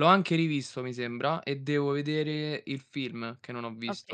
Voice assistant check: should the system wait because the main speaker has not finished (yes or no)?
no